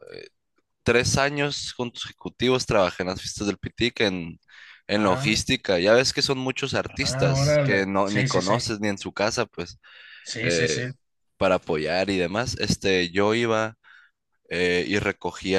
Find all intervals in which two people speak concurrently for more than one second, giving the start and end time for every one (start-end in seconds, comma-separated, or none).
6.9-8.5